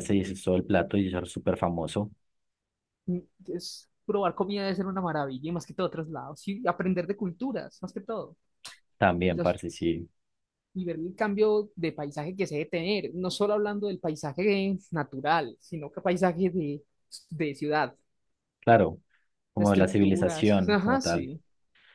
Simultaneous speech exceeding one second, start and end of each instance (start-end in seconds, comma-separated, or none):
19.6-21.3